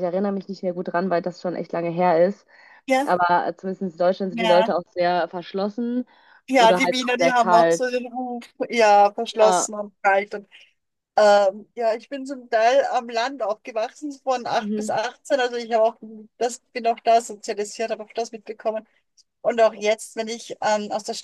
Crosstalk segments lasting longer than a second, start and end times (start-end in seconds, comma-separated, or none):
6.6-7.9